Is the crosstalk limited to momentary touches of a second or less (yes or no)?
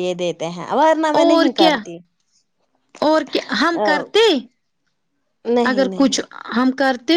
yes